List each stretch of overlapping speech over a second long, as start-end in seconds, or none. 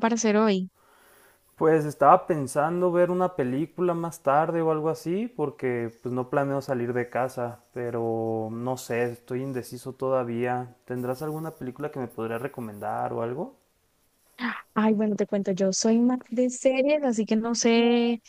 none